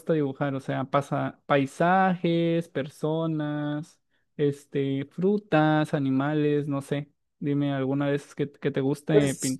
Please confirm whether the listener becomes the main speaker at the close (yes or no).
yes